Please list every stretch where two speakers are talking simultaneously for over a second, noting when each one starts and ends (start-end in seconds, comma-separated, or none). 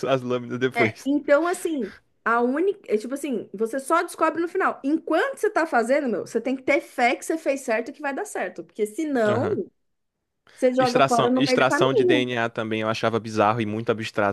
10.8-12.3